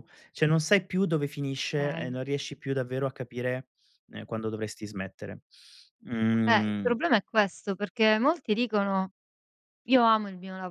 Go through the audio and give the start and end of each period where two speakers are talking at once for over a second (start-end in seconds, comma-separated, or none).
none